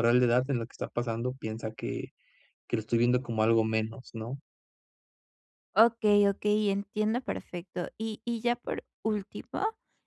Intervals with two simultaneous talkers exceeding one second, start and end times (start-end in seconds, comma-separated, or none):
none